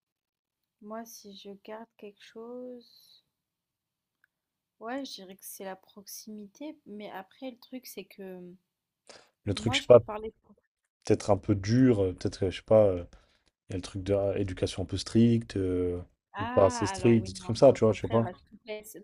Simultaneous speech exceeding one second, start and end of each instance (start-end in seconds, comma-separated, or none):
16.4-18.2